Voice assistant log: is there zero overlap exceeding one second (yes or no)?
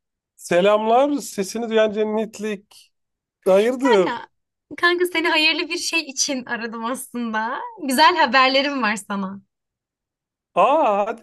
yes